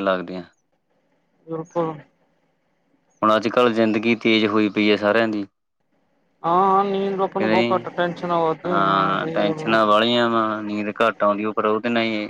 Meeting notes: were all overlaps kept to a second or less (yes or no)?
yes